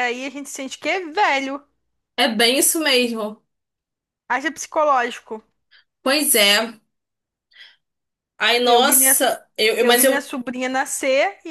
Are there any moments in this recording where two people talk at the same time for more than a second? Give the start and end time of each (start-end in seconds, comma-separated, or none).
none